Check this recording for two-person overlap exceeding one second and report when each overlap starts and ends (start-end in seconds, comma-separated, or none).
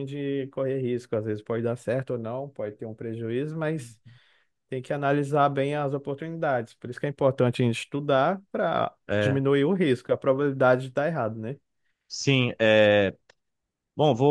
none